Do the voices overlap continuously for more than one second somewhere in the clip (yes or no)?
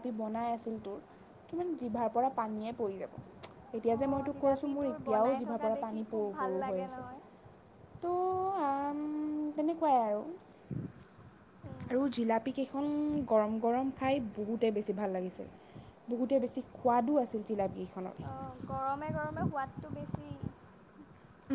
yes